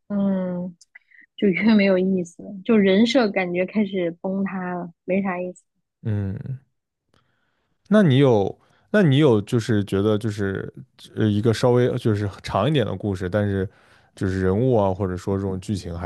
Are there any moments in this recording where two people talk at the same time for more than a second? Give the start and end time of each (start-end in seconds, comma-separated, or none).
none